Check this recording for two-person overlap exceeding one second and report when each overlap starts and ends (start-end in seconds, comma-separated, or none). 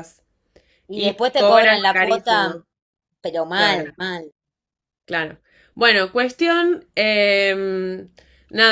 0.9-2.6